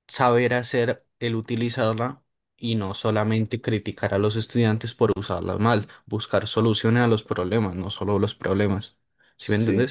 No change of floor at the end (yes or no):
no